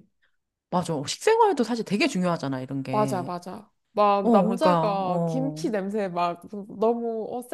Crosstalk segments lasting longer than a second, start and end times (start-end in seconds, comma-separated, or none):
4.2-5.7